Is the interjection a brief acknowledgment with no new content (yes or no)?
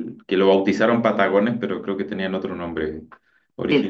no